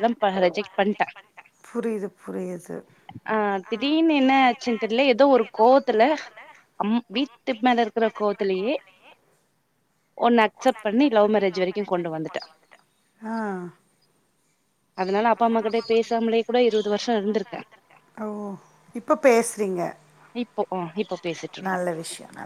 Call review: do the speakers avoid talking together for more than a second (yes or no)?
yes